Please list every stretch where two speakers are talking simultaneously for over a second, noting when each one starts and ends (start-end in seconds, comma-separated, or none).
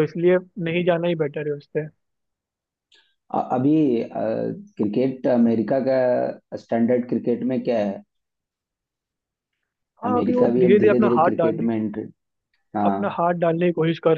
10.1-11.7